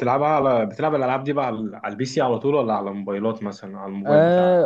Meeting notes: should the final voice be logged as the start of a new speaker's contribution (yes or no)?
yes